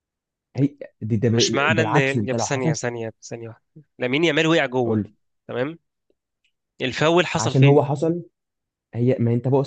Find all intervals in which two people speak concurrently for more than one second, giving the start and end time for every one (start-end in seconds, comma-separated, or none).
1.3-2.7